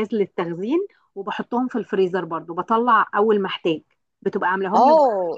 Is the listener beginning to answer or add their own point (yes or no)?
yes